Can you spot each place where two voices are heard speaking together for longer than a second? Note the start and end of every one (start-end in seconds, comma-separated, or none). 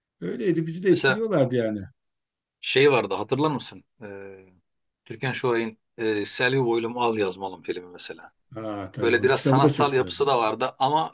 9.0-10.3